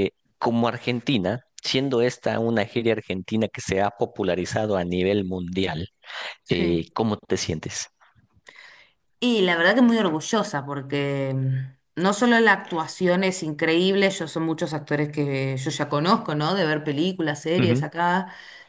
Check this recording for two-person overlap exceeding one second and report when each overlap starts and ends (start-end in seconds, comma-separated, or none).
none